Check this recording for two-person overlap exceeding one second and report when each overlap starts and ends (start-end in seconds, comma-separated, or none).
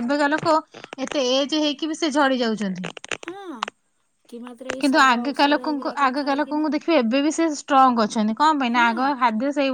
4.8-6.7